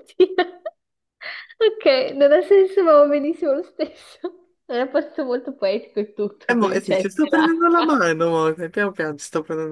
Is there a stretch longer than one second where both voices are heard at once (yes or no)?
yes